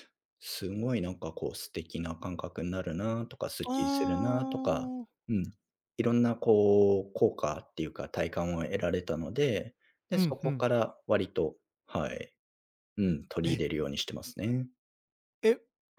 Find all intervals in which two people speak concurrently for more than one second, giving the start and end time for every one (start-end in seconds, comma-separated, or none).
3.7-4.9